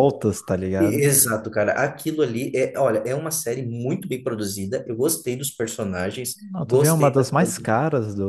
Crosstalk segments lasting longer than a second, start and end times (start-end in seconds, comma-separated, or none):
6.4-7.7